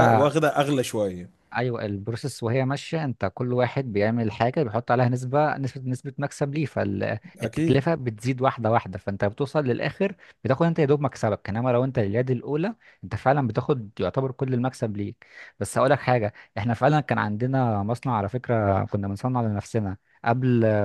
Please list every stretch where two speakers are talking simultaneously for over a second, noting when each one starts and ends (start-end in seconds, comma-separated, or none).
none